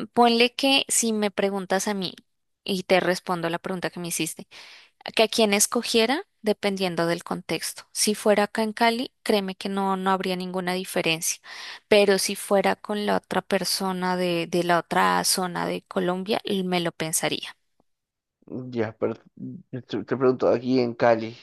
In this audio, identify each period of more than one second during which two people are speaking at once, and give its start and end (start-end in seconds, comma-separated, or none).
none